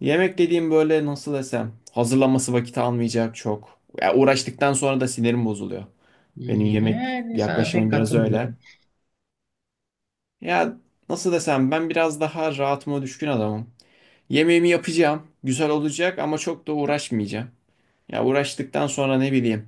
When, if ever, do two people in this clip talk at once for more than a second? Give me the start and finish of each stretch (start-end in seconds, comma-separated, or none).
6.8-8.5